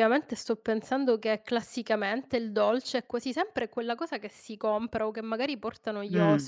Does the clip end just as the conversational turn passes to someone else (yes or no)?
yes